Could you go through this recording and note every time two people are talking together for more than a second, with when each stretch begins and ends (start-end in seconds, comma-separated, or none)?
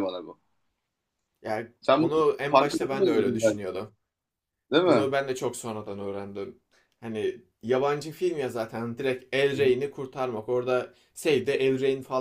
1.8-3.6